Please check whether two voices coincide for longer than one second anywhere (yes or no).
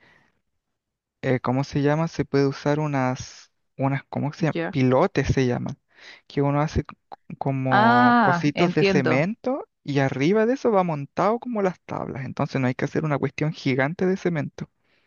yes